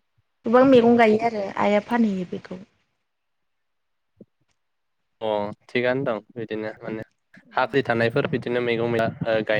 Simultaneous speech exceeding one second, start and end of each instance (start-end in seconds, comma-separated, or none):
none